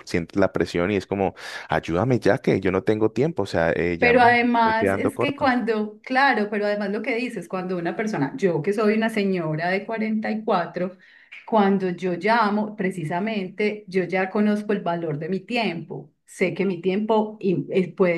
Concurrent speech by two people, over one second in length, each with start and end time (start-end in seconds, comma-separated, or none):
4.0-5.5